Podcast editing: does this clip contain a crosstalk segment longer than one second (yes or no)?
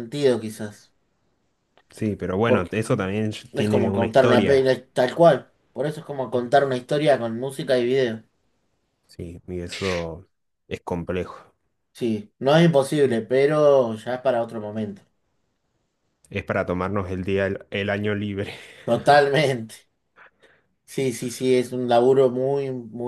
yes